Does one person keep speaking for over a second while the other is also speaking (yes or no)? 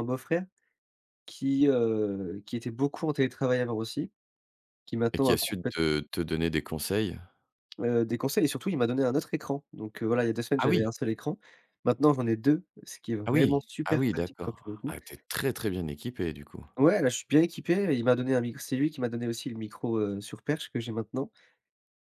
yes